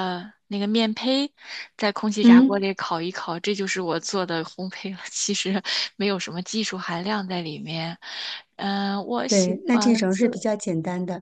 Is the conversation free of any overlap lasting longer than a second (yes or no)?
no